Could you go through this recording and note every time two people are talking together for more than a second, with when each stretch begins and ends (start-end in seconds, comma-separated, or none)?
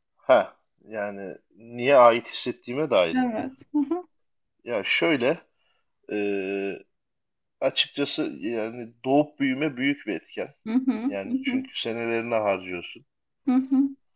none